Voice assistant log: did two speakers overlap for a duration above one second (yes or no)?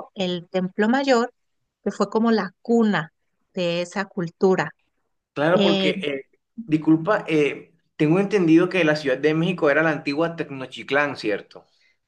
no